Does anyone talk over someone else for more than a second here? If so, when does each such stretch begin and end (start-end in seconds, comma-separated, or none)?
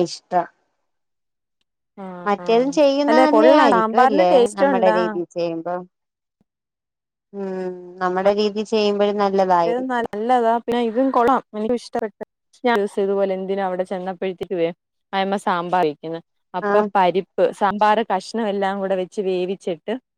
2.3-5.0